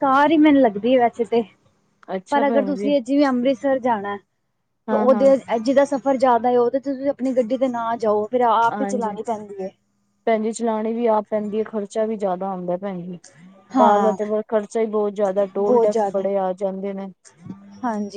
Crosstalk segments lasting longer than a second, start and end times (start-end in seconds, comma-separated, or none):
none